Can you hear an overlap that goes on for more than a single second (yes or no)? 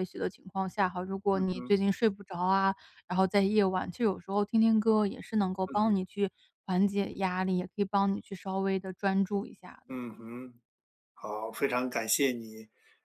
no